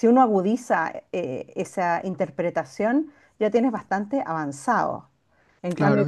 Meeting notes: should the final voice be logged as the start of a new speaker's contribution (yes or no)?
no